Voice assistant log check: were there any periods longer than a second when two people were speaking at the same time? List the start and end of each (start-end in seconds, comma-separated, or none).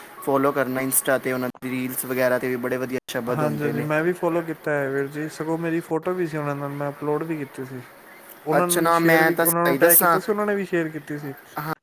8.6-10.2